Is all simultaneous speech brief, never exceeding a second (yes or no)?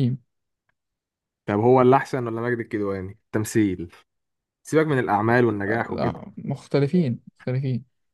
yes